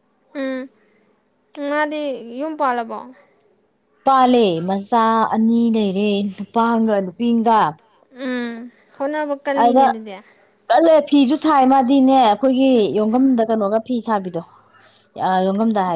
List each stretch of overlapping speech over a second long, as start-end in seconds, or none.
none